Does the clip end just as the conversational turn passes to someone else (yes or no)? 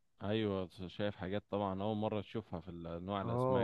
yes